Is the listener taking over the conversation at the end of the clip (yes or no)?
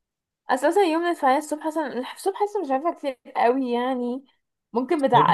no